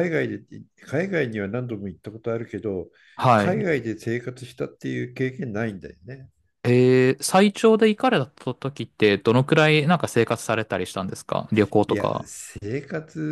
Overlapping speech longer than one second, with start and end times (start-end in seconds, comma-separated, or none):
none